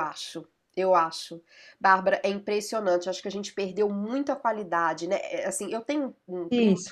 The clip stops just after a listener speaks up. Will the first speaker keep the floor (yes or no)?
yes